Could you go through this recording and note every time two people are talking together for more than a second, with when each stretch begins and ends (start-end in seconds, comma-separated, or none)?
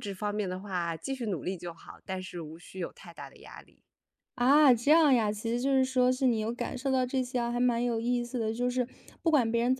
none